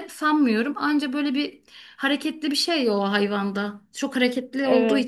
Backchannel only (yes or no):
yes